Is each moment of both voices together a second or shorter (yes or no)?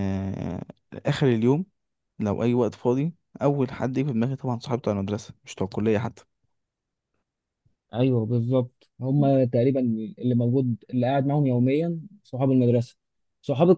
yes